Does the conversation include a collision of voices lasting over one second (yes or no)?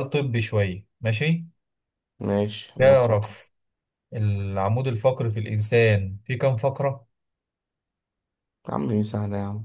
no